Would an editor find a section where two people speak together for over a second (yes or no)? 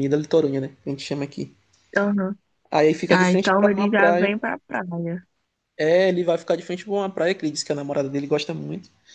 yes